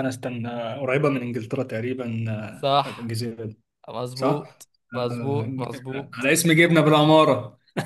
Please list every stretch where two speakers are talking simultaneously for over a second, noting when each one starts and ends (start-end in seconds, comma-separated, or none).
4.1-6.3